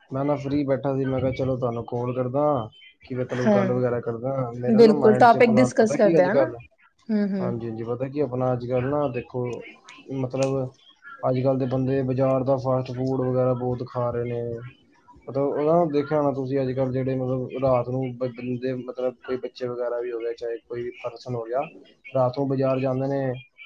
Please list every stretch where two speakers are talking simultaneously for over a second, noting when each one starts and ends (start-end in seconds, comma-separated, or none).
4.8-6.5